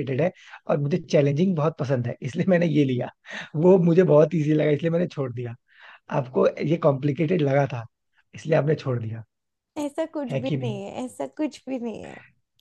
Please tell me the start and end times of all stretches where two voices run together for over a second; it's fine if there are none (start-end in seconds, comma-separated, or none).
none